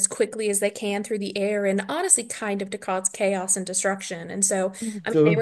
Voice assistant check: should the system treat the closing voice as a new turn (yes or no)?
no